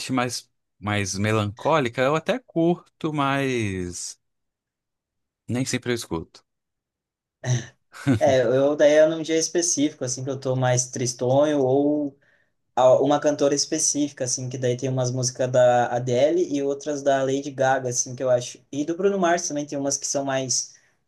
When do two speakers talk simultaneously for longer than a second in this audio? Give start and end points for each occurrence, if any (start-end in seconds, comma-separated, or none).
none